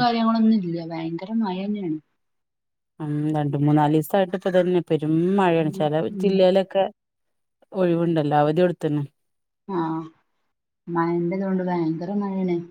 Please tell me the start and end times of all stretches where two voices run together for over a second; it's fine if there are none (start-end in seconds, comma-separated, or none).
none